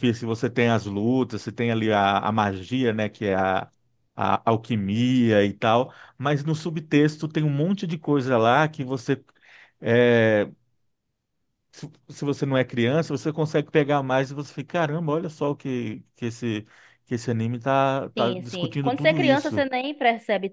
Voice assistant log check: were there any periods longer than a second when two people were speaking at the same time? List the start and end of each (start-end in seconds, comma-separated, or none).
18.2-19.7